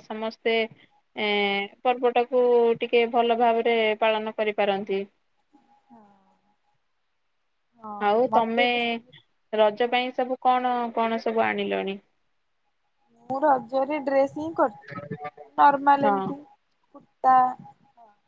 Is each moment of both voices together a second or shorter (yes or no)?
yes